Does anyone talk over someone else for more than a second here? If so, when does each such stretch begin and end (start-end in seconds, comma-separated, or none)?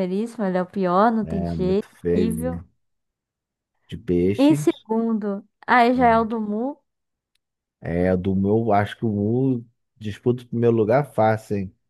1.2-2.6